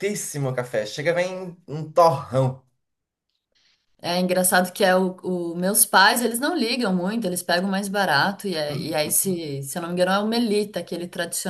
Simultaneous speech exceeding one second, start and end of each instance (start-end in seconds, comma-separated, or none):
none